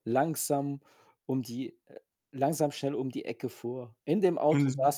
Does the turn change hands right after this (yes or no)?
no